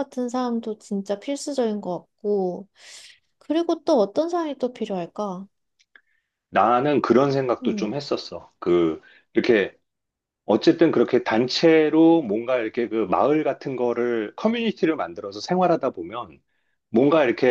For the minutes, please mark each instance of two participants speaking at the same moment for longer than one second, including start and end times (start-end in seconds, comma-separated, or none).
none